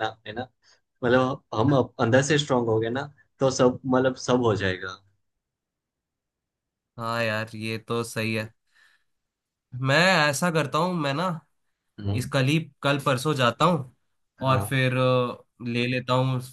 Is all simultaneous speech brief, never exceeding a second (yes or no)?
yes